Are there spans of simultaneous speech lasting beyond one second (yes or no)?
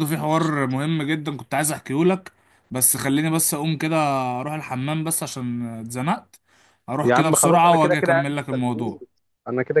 yes